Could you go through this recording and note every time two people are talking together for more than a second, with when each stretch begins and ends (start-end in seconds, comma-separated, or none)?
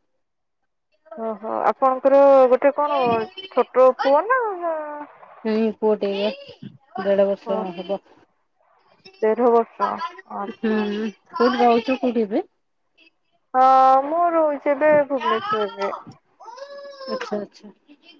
none